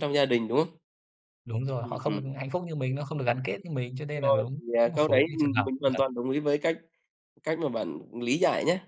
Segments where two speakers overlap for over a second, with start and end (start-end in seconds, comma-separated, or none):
4.1-6.0